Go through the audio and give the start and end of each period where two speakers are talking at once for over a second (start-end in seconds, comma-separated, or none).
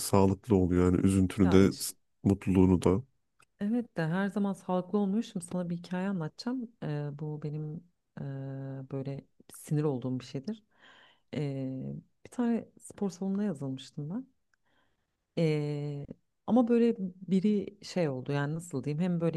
none